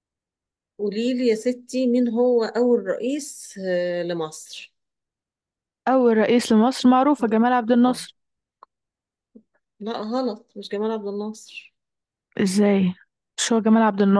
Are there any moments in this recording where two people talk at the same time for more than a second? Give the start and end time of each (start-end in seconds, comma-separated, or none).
none